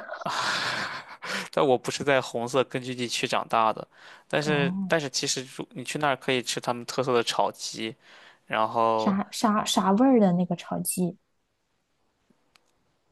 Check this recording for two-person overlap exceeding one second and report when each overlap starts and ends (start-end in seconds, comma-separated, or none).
none